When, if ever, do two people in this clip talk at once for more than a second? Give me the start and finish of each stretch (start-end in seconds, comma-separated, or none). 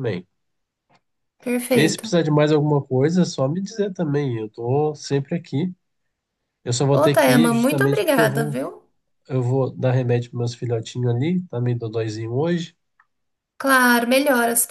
6.9-8.6